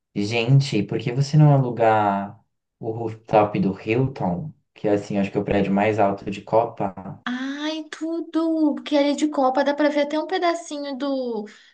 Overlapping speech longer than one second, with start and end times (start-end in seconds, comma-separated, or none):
none